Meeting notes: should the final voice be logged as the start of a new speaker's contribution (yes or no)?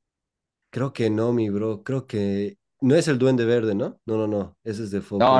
yes